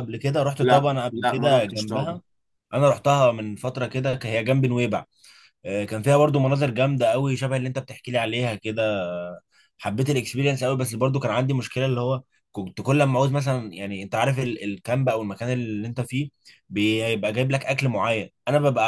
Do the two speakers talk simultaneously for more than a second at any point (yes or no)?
yes